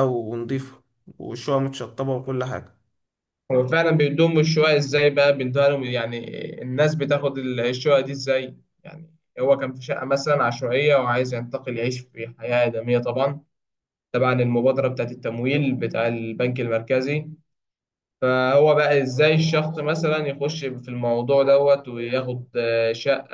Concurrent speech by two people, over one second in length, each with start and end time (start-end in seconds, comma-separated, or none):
none